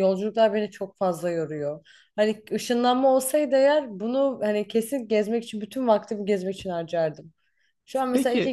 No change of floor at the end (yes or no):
yes